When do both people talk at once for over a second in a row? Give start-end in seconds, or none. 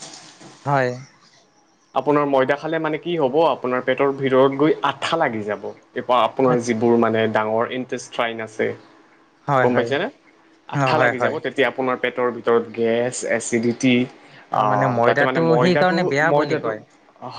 14.6-16.6